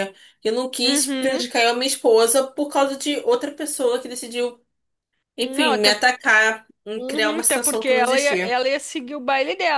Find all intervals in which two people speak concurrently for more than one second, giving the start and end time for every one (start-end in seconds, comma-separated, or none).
7.0-8.5